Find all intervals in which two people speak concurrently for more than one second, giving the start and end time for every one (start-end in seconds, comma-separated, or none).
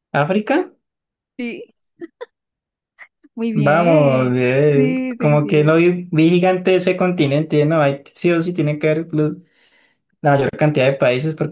3.6-5.8